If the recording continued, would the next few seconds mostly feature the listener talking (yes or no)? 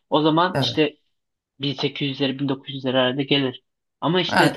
yes